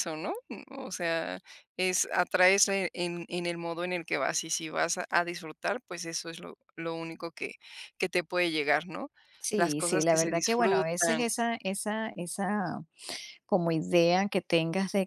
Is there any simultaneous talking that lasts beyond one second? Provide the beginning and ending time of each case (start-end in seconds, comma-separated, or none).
9.6-11.2